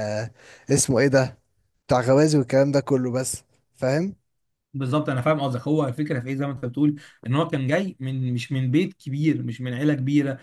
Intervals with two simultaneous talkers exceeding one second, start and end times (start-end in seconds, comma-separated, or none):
none